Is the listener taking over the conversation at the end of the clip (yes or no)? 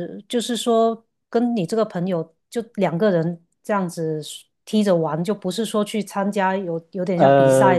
no